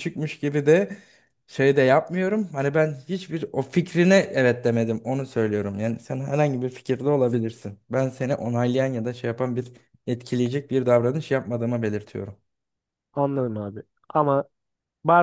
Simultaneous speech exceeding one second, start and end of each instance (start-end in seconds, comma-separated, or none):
none